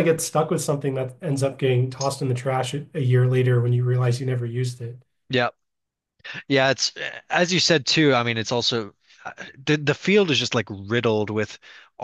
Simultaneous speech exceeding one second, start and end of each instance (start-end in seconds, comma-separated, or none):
none